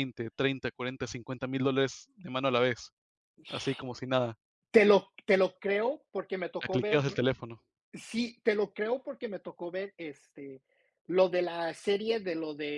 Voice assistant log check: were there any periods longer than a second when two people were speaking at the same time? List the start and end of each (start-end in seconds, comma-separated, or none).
none